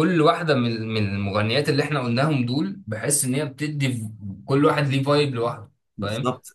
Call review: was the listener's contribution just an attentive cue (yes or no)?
no